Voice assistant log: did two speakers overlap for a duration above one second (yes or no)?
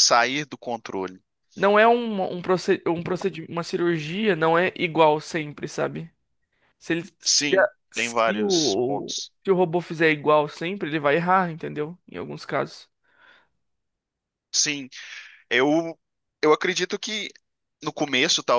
yes